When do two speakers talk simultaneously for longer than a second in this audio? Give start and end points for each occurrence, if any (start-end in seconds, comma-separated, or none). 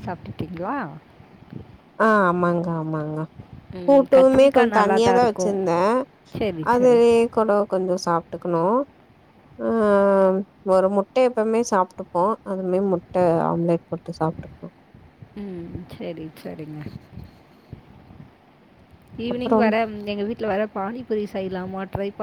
3.9-5.5